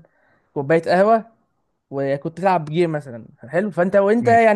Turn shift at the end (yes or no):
no